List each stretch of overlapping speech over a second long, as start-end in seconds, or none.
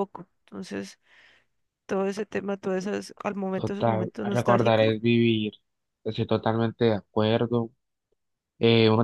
3.5-4.9